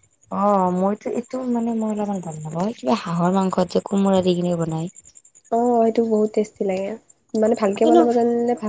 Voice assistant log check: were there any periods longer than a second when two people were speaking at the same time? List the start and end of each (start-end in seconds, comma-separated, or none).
none